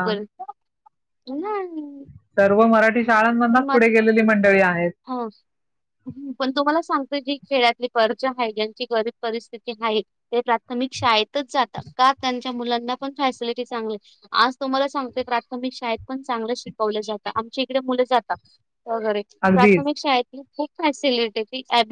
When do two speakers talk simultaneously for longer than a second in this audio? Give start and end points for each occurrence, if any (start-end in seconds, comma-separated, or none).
none